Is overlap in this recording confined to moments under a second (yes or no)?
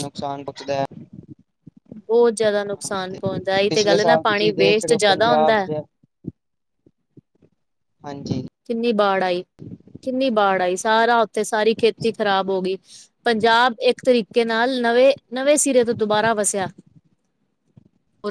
no